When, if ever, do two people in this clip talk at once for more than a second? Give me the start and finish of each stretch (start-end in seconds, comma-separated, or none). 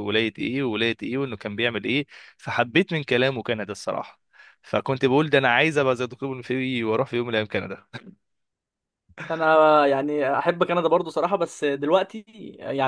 none